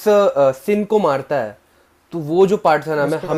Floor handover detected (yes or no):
no